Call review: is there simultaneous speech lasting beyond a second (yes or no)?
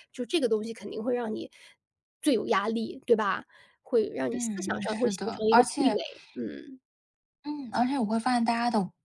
yes